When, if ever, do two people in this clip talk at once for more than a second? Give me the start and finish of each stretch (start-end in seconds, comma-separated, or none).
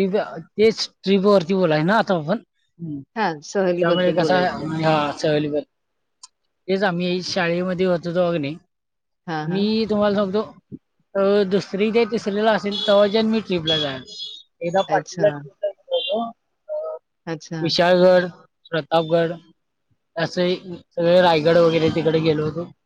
3.2-4.7